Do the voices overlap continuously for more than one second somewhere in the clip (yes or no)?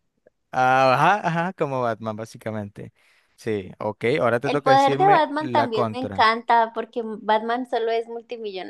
yes